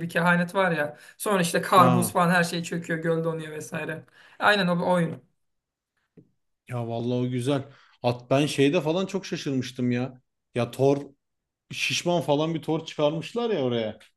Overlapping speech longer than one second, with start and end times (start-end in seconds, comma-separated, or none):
none